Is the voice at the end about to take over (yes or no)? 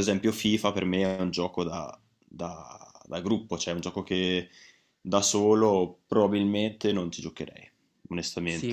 yes